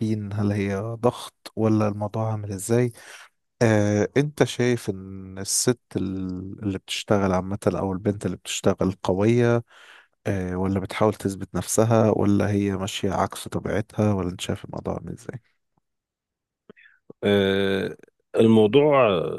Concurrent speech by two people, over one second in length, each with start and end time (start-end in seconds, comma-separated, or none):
none